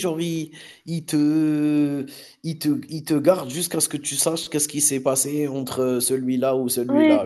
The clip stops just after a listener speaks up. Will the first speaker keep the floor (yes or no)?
no